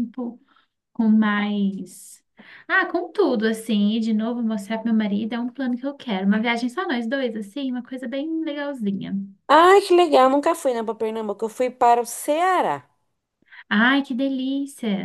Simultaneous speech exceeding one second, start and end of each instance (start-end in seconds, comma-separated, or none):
none